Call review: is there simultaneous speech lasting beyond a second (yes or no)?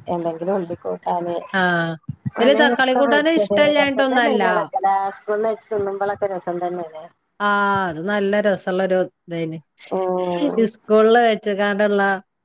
yes